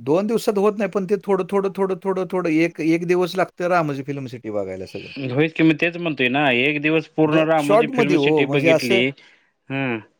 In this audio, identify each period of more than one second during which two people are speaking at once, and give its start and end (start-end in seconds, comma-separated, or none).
7.3-9.0